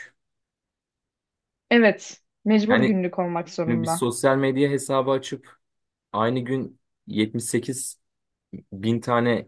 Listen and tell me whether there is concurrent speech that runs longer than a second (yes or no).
no